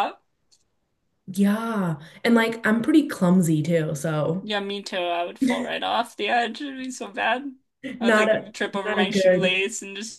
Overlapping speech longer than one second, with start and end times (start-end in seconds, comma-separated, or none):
8.0-9.6